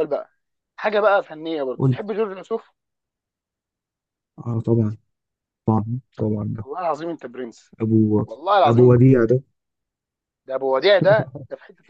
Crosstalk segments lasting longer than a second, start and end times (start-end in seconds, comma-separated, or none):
none